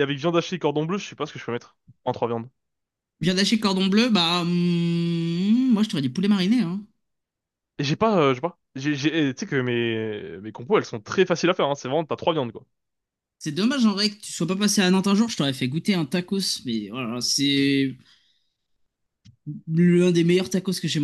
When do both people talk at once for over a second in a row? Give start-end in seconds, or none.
none